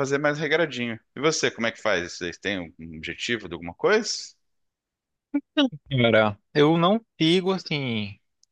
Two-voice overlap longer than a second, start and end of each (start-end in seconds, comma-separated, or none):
none